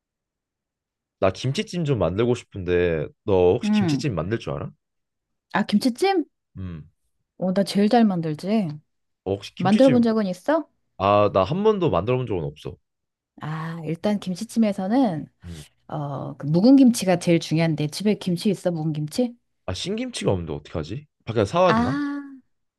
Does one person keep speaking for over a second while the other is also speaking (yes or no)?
no